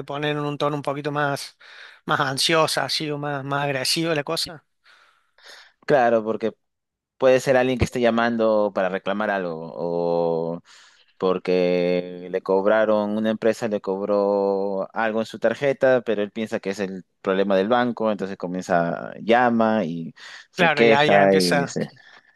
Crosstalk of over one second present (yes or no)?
yes